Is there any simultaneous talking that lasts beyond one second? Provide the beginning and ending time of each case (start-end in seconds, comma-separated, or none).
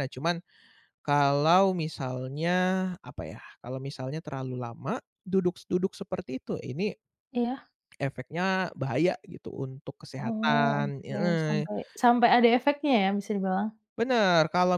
10.2-11.7